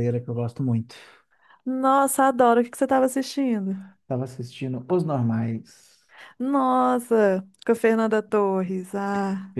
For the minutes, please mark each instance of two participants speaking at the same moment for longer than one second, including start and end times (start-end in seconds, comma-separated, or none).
none